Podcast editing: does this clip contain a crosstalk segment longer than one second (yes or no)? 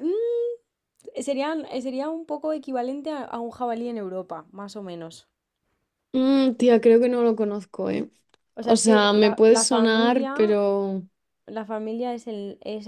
yes